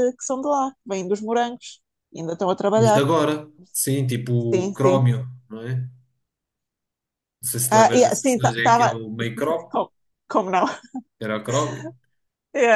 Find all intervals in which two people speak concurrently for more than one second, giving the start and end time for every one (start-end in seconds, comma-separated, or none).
7.7-8.9